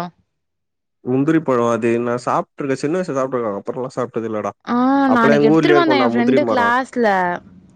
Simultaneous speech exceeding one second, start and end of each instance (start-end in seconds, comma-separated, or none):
5.2-6.7